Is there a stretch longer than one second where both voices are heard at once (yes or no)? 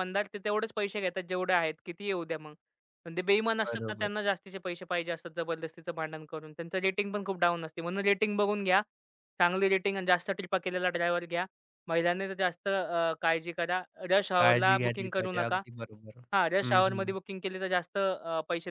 yes